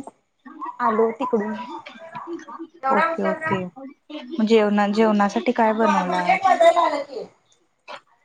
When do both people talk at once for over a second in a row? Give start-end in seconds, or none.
none